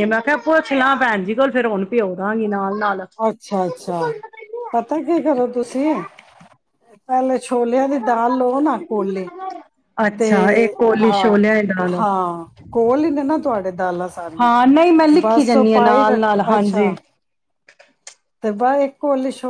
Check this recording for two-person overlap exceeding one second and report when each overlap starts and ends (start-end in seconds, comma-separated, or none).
15.2-16.9